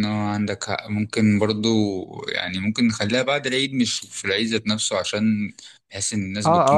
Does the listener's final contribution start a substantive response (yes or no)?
yes